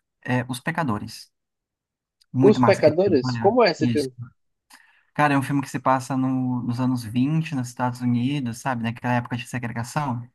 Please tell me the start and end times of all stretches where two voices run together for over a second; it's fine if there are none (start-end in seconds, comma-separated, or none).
2.4-4.1